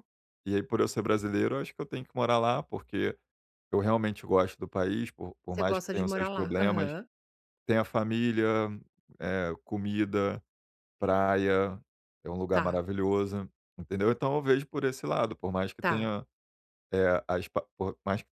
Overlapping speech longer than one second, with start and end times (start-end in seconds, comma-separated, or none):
5.5-6.9